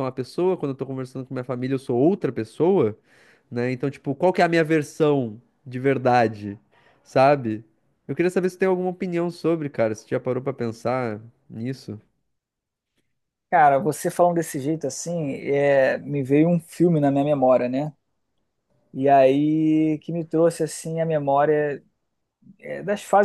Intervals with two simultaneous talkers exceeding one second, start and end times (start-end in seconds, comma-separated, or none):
none